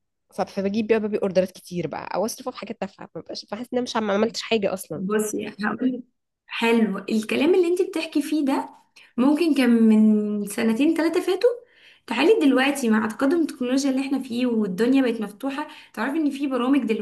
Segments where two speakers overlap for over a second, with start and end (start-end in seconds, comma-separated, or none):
none